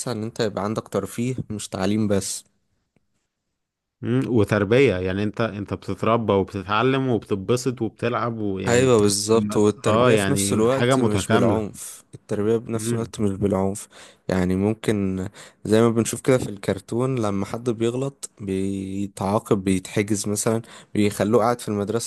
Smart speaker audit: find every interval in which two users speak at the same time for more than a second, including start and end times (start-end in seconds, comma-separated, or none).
9.9-11.7